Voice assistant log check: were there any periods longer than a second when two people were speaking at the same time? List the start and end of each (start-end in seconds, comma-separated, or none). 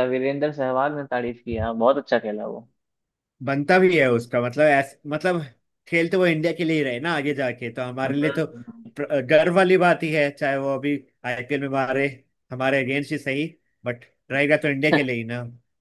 none